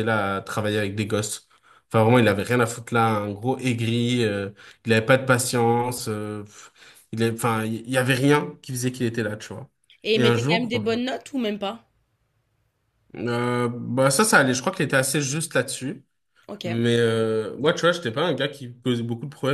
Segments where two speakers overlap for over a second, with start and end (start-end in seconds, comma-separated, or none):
none